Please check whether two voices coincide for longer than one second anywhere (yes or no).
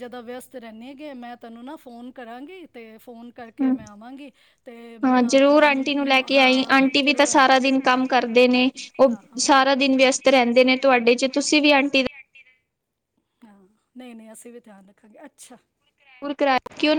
yes